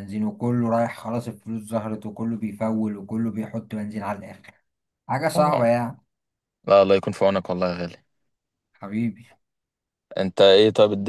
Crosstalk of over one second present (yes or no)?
no